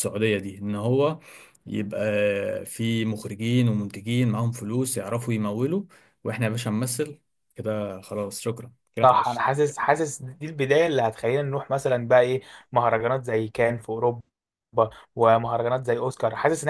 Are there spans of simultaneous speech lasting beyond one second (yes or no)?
no